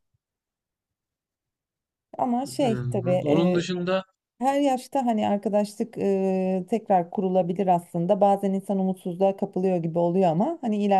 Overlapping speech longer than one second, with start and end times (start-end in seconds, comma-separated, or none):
2.4-3.6